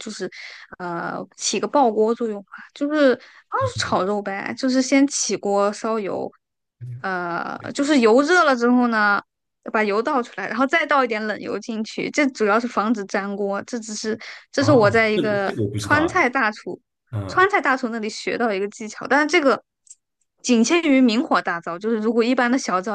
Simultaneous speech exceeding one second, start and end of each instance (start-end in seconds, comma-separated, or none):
14.6-16.2